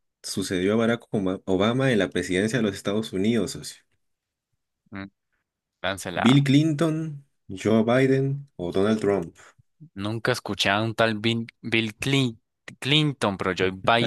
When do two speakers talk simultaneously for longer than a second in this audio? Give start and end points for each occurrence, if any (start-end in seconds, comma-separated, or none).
none